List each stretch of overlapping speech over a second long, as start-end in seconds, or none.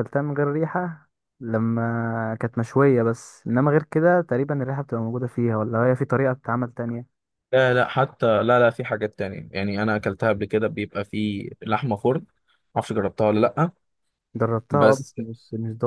none